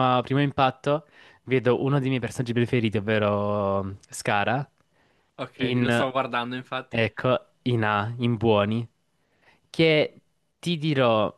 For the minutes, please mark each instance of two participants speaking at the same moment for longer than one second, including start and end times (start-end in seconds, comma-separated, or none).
none